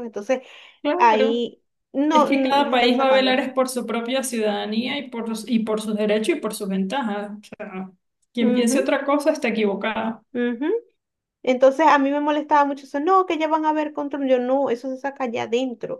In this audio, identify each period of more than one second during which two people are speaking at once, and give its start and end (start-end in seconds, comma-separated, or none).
2.1-3.4